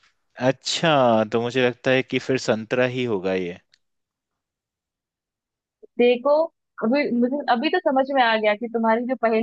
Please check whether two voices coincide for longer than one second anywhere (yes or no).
no